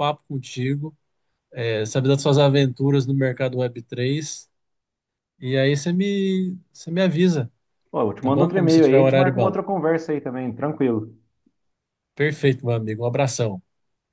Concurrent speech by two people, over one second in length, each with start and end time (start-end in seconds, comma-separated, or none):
8.2-9.6